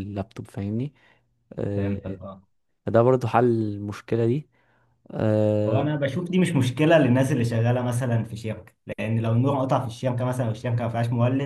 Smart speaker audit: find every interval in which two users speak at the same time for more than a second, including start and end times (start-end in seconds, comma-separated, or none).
none